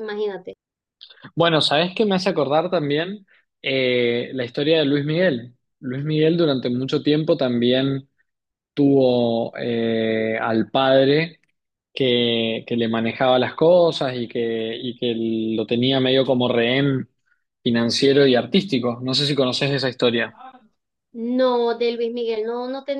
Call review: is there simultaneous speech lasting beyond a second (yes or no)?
no